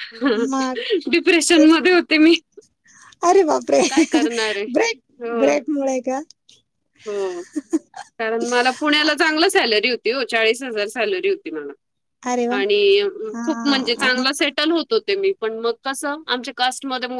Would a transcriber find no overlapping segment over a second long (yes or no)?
yes